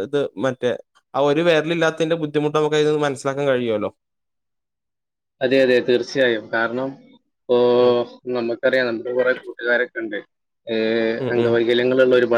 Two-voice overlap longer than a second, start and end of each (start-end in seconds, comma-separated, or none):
none